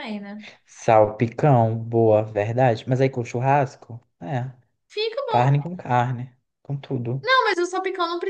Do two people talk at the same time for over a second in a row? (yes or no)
no